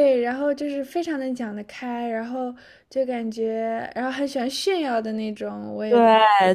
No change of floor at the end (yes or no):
no